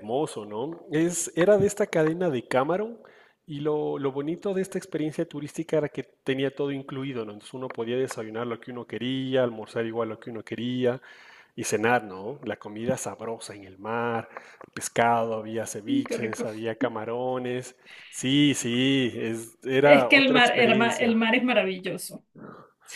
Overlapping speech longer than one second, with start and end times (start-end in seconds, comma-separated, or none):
19.8-21.1